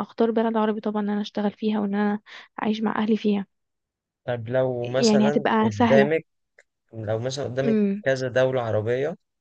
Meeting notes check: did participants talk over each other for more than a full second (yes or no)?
yes